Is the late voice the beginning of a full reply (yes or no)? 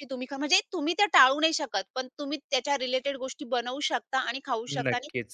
no